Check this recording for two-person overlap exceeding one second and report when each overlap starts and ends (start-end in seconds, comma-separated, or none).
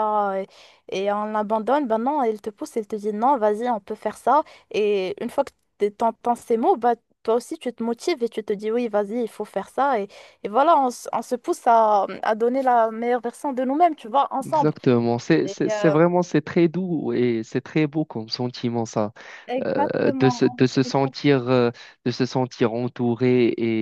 19.6-21.1